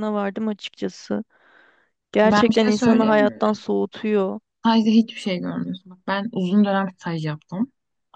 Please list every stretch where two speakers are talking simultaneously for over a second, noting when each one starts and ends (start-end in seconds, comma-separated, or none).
2.2-3.6